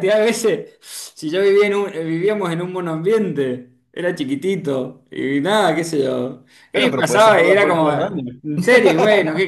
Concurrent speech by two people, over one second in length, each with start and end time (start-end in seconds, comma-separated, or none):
6.7-8.2